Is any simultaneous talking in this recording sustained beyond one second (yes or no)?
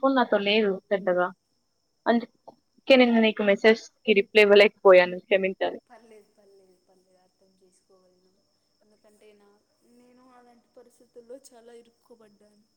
no